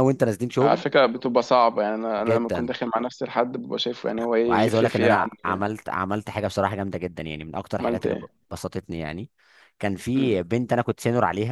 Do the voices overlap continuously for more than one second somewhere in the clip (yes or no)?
yes